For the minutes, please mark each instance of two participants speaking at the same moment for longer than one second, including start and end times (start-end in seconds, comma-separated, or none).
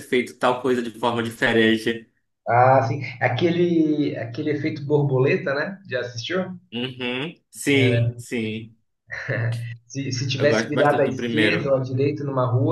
10.4-11.7